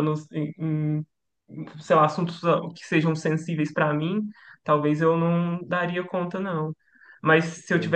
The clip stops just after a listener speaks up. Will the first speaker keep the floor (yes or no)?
yes